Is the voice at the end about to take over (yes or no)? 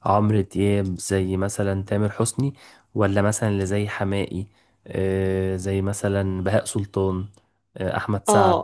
yes